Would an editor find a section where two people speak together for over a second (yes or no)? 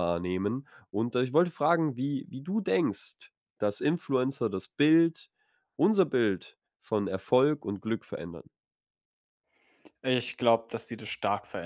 no